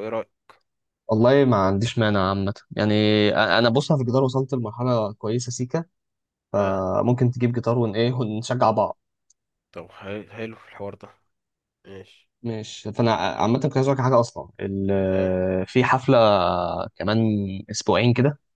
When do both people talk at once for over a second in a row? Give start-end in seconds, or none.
none